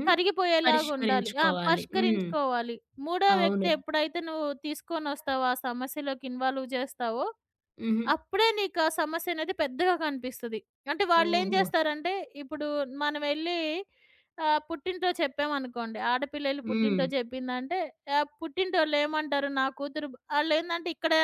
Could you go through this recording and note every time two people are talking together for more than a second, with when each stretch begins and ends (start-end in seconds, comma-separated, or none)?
0.6-2.3